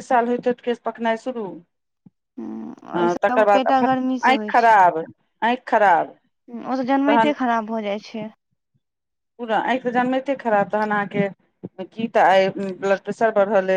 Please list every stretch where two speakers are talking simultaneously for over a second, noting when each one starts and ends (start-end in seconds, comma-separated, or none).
3.0-4.7